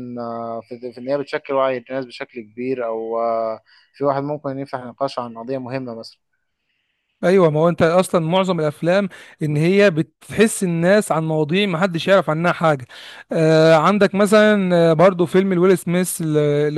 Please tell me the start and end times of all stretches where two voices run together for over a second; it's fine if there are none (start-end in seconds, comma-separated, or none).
none